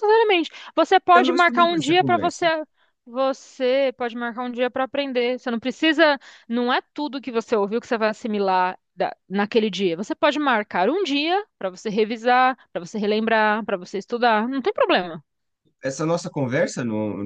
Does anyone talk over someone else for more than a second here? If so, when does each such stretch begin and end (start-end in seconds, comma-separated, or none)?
1.1-2.5